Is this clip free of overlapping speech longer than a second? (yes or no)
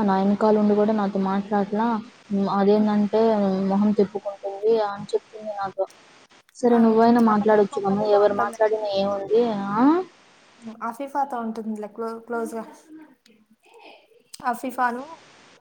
no